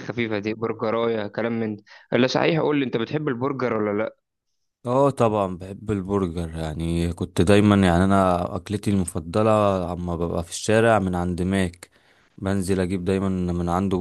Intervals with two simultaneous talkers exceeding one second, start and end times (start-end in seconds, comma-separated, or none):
none